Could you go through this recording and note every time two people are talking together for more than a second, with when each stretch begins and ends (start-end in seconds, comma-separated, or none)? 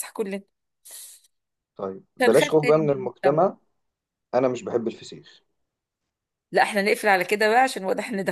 2.2-3.4